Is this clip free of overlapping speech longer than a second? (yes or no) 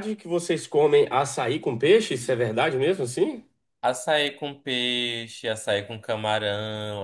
yes